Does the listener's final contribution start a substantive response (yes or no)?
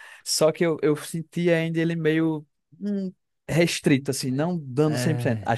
no